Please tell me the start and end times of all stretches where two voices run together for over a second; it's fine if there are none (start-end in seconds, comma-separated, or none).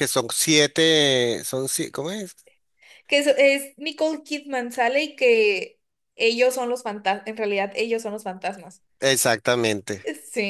none